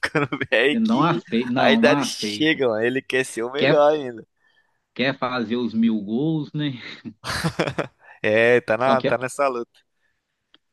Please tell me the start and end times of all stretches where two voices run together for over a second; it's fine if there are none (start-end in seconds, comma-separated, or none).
0.7-2.6